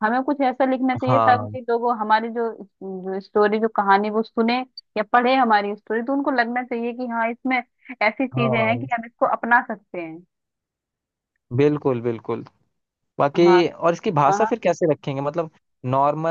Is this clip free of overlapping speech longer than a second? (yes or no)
yes